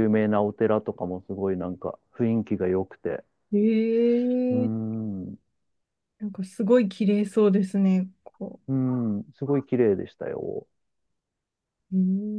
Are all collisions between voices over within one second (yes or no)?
yes